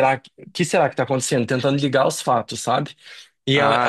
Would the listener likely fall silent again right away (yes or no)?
no